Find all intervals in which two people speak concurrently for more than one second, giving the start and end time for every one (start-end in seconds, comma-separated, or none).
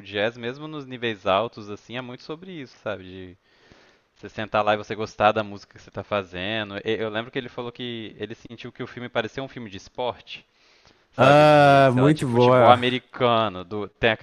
11.2-12.8